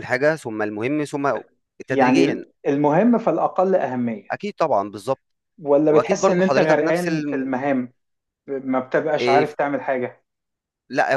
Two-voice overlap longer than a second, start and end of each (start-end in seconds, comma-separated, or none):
5.9-7.5